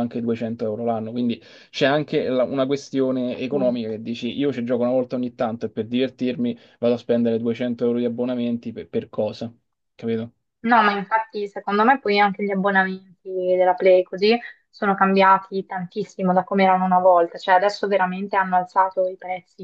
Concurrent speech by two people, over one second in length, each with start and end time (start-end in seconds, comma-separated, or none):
none